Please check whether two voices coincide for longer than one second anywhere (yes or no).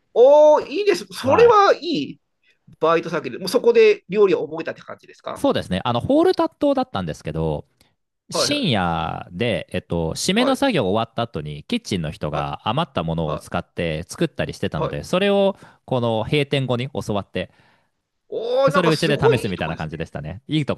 yes